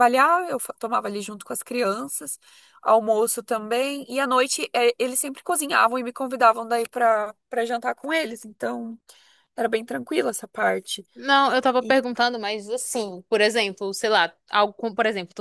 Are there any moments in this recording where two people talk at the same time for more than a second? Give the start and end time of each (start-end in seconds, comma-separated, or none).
none